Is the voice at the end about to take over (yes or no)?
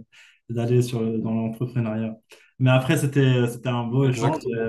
no